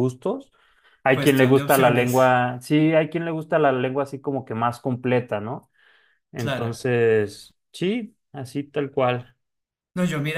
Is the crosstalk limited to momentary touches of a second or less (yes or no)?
no